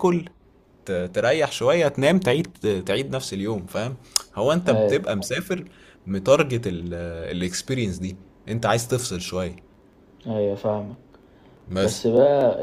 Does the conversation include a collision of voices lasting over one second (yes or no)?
no